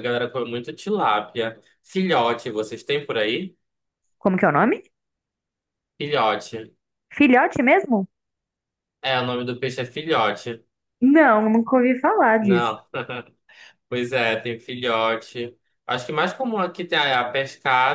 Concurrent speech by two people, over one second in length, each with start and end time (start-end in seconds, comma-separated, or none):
none